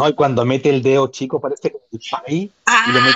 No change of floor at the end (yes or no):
yes